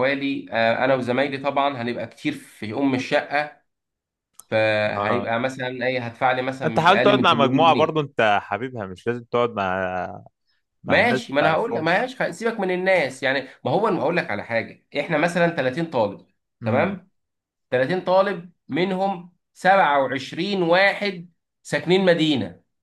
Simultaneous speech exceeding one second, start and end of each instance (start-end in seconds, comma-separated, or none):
6.7-8.0, 10.8-12.1